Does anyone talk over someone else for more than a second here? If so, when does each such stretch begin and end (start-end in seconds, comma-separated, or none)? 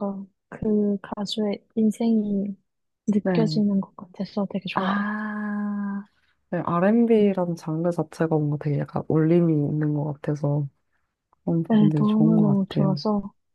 11.7-13.0